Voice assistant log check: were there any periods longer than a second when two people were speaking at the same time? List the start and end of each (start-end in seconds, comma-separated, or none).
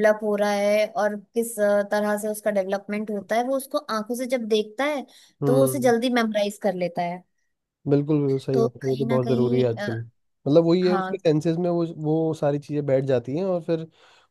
8.5-9.9